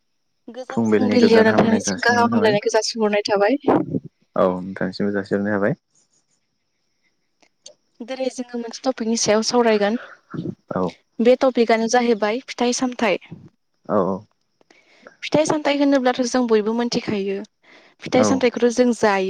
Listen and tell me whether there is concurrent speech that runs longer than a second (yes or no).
yes